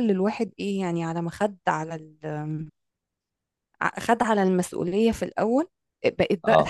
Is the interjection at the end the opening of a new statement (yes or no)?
no